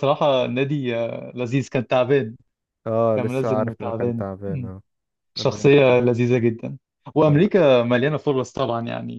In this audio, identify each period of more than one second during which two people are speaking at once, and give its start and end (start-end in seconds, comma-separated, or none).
3.1-4.7